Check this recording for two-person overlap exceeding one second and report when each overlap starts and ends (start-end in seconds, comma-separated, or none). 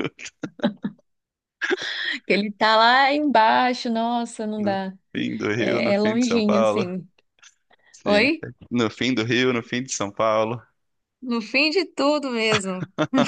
5.6-6.9